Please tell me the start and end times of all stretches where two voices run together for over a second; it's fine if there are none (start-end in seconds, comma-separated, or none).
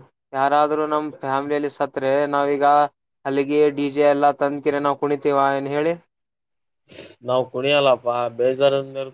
none